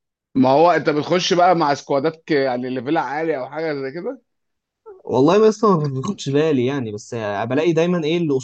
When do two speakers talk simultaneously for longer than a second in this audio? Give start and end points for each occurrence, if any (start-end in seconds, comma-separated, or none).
none